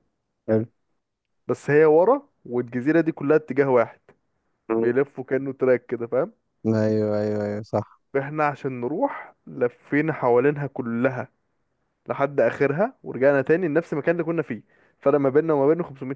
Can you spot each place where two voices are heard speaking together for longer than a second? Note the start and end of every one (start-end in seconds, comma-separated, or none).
none